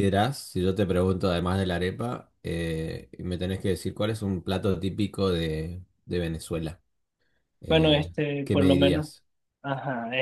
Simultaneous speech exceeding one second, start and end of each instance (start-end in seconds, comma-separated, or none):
7.7-9.1